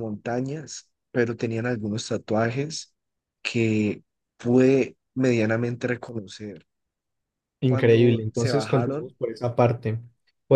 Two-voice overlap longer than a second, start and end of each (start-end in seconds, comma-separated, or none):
7.6-9.1